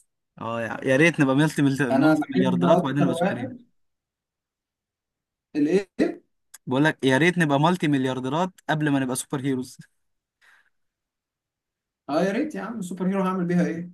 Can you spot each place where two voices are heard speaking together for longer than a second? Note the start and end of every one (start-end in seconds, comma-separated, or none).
1.9-3.5